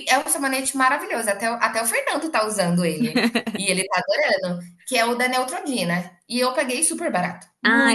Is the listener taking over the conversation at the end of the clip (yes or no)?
yes